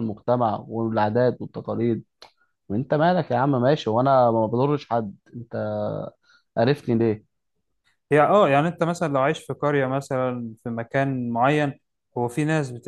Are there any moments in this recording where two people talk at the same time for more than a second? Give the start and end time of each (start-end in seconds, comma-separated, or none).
none